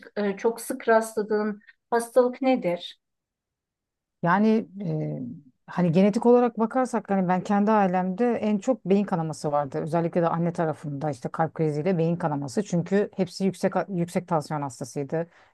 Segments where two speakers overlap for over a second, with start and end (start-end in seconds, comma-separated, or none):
none